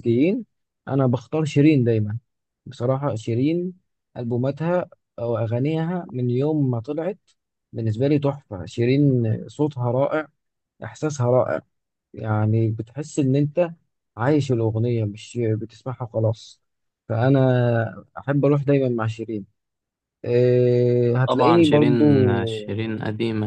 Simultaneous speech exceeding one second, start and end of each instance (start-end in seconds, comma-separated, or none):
21.3-22.8